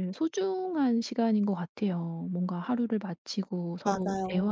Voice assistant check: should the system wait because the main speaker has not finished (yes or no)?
yes